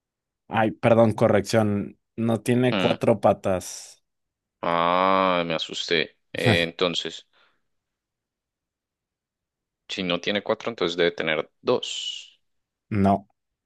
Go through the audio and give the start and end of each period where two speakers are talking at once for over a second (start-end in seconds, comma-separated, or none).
none